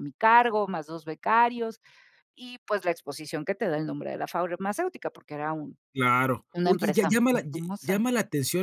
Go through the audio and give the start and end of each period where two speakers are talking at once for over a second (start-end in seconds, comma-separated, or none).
6.5-8.0